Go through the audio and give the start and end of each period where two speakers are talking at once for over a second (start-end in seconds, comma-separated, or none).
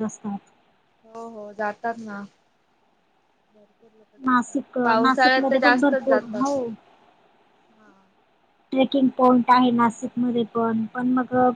4.2-6.5